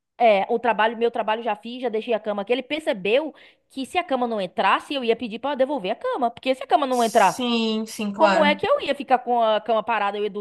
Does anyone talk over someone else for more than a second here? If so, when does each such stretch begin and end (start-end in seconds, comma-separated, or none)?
none